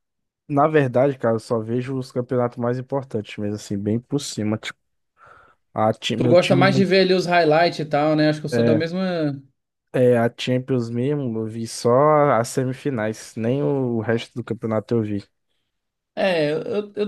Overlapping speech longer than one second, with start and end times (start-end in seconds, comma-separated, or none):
none